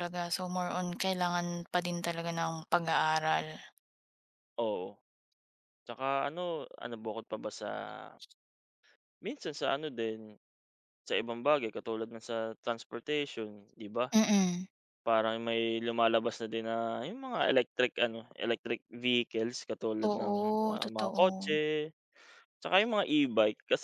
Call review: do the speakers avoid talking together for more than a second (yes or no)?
no